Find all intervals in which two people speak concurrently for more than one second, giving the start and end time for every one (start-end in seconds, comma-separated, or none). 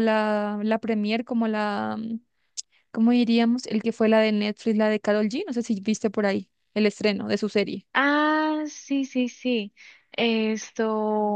none